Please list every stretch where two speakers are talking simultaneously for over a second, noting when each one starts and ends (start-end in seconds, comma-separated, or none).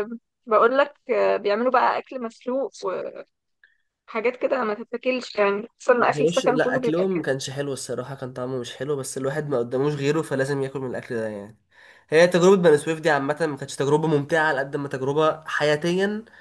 6.0-7.3